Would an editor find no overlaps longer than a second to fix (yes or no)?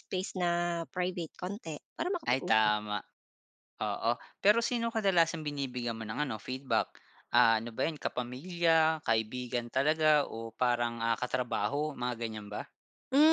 yes